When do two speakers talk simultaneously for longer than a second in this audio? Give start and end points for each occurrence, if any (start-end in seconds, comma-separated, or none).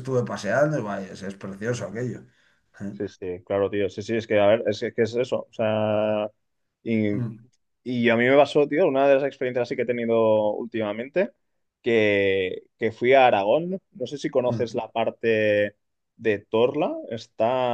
none